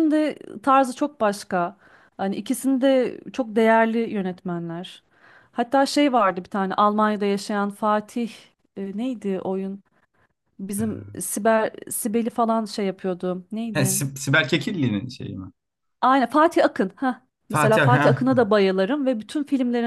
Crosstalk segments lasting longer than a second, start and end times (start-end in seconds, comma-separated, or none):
none